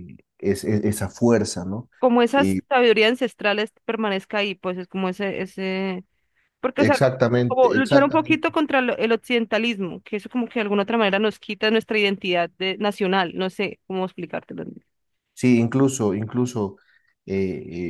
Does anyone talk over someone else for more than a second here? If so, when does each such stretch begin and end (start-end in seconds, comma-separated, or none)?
6.8-8.5